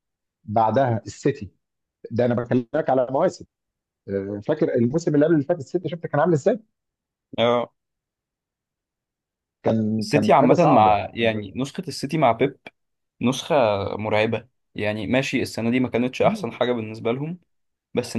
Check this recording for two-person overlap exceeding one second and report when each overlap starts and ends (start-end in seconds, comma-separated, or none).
10.0-11.4